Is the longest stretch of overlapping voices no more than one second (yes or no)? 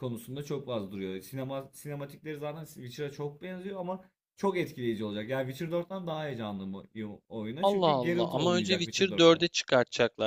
no